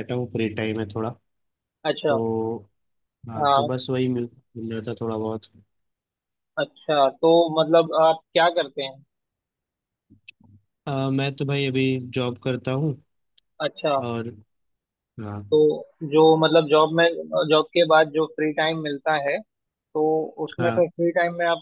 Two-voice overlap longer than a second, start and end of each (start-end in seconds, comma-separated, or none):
none